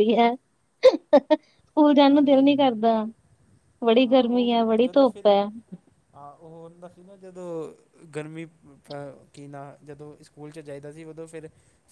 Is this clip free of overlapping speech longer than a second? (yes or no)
yes